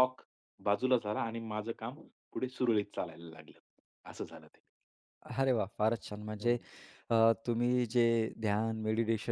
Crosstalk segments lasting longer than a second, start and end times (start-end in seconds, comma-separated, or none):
none